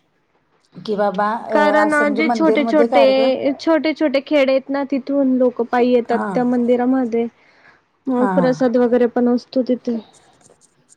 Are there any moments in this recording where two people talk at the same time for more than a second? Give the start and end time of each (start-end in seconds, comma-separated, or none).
1.5-3.3